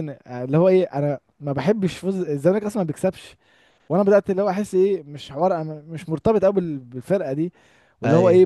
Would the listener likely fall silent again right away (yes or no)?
yes